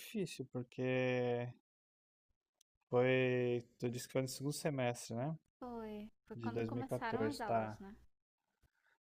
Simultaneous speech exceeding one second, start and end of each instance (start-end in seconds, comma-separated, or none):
6.3-7.8